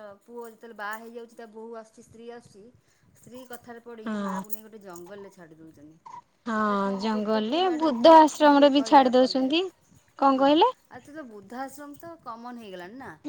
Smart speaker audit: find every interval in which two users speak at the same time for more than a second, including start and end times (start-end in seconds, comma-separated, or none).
8.1-9.6